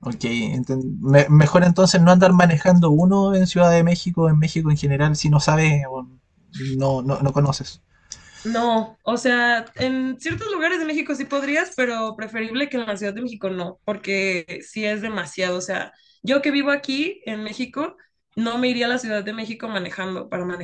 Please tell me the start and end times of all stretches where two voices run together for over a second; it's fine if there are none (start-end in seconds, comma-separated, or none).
none